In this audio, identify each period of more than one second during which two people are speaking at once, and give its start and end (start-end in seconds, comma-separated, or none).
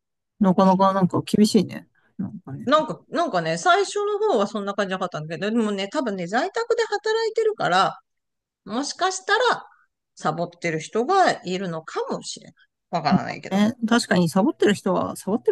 none